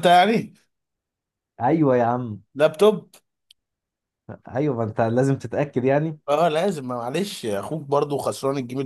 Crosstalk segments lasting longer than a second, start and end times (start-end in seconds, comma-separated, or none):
none